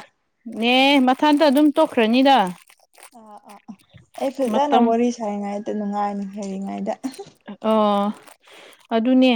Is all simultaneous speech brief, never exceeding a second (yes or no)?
yes